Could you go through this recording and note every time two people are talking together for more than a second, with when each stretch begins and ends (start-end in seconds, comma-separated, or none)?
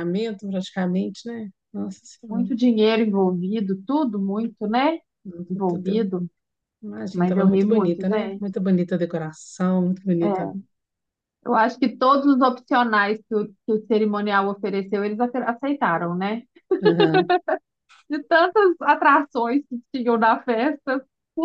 7.1-8.4